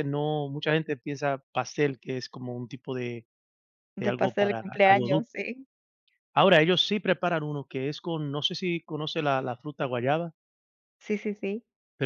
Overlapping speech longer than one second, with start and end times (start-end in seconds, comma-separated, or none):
4.0-5.5